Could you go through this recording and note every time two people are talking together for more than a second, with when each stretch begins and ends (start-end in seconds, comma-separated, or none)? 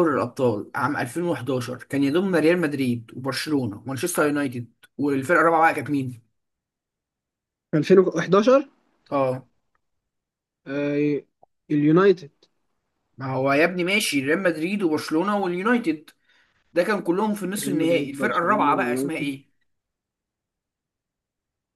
17.6-19.4